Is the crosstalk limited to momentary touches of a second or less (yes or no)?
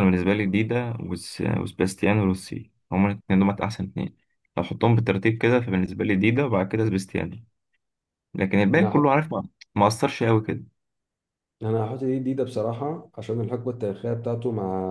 yes